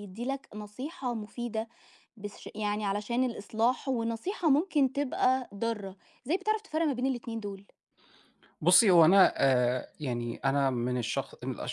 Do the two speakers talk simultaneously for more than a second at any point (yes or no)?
no